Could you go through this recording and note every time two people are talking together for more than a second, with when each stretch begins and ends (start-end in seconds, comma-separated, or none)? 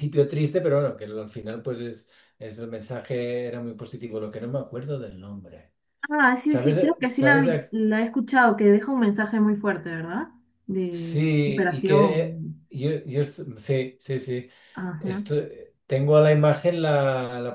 6.5-7.7, 10.9-12.6